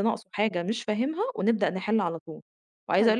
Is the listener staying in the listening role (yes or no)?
yes